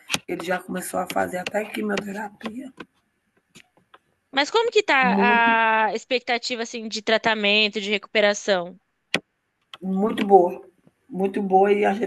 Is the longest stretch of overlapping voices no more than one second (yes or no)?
yes